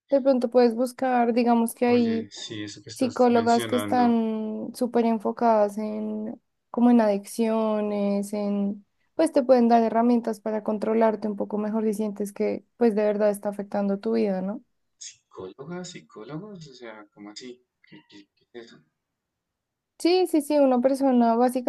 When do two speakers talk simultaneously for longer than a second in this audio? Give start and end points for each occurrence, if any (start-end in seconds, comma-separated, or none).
2.9-4.2